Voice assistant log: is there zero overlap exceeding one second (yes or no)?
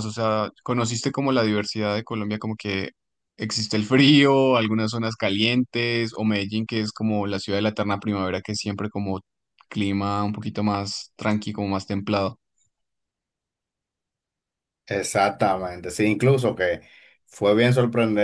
yes